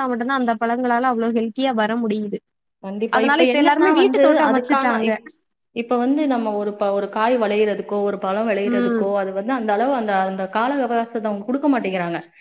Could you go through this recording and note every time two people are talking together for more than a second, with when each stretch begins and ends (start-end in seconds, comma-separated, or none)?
3.2-5.1